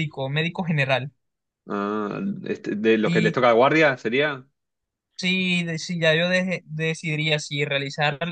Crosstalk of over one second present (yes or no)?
no